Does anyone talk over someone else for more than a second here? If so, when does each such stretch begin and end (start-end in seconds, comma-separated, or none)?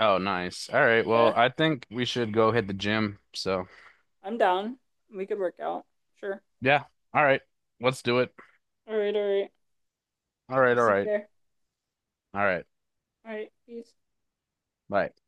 none